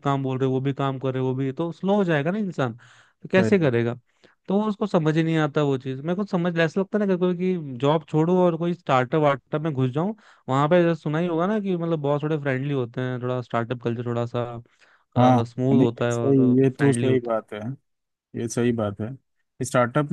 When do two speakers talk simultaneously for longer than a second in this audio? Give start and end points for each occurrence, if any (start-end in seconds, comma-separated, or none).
15.2-17.4